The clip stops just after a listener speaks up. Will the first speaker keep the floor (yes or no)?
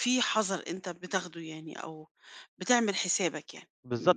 no